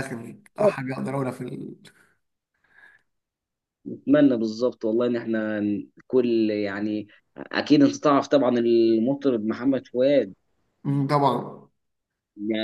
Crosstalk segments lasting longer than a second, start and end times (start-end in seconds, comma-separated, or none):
none